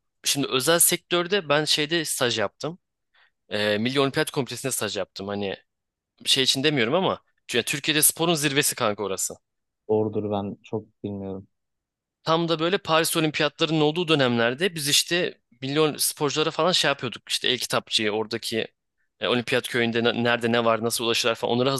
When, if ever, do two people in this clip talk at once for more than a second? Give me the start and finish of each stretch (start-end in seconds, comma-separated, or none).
none